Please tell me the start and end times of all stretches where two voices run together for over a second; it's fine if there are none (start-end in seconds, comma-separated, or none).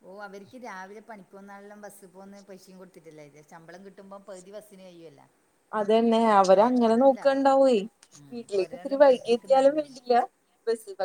8.6-10.0